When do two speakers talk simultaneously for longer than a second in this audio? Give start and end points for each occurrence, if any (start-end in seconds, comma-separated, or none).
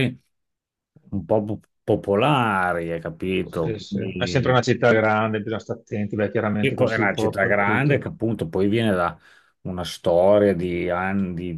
6.6-8.0